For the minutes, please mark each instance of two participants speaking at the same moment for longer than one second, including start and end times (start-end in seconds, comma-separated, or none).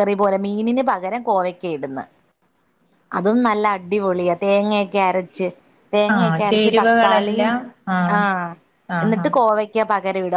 6.2-7.5